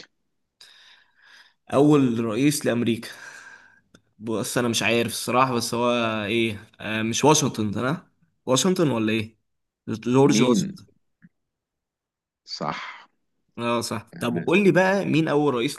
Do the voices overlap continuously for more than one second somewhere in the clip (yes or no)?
no